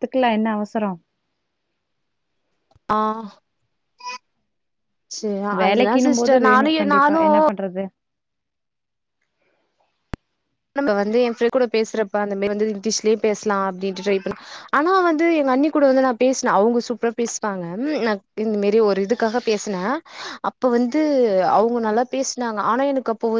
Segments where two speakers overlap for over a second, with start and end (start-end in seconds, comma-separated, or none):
5.6-7.4